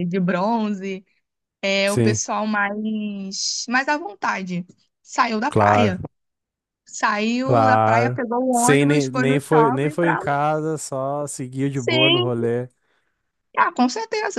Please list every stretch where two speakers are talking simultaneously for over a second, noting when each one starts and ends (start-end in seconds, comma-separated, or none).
7.4-10.2